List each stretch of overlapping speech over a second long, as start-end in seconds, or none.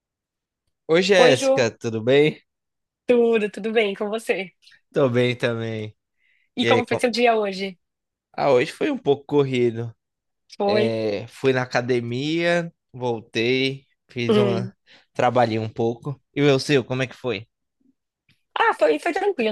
none